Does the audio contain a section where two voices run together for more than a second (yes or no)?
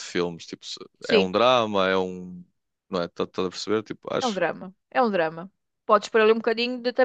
no